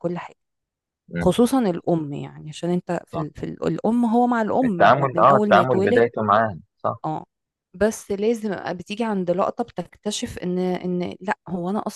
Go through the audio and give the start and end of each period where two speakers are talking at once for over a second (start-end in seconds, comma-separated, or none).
4.6-6.1